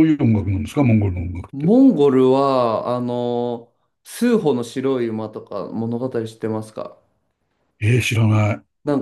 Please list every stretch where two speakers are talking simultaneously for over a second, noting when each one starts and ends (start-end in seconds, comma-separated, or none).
none